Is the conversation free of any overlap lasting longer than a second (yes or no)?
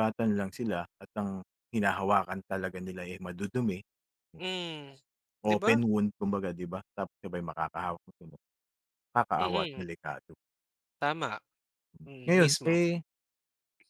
yes